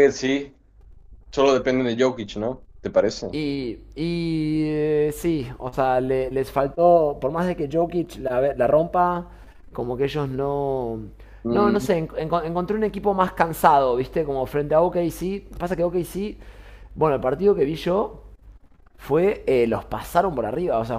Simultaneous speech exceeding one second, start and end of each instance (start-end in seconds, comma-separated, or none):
none